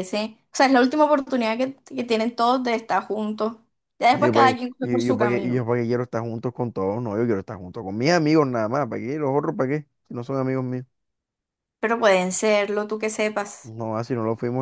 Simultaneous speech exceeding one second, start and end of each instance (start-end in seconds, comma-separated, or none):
4.1-5.6